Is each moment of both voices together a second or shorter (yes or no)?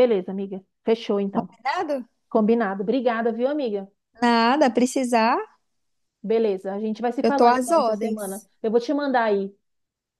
no